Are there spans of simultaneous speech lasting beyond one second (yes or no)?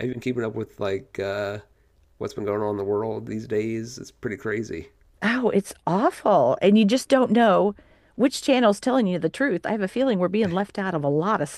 no